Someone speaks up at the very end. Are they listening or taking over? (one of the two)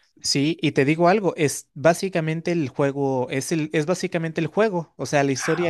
listening